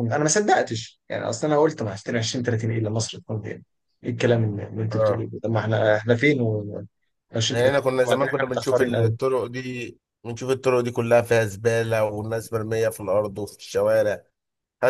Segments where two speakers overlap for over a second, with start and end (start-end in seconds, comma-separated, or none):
7.5-9.1